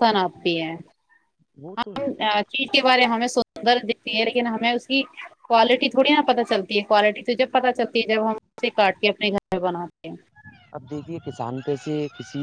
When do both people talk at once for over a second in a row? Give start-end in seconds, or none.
none